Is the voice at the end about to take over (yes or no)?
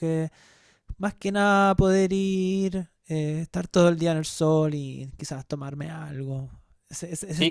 yes